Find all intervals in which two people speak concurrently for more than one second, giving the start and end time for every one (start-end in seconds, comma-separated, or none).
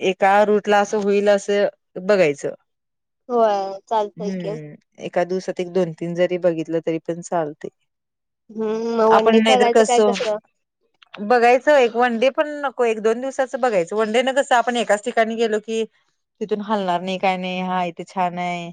none